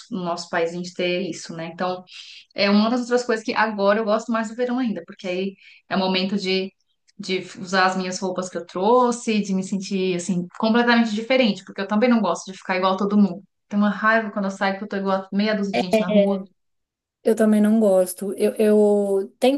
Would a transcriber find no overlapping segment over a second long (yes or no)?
yes